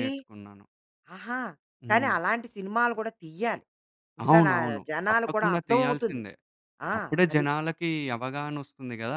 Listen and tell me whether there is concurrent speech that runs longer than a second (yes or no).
yes